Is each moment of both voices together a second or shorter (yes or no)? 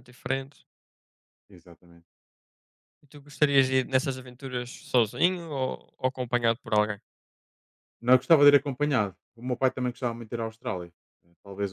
yes